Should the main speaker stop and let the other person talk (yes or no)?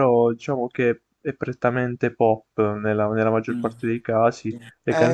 yes